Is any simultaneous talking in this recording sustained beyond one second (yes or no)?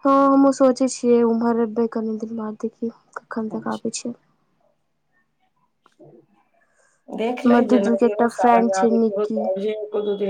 yes